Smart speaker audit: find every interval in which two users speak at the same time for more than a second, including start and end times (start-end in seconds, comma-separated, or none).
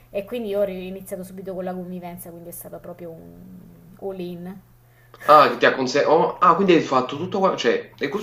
none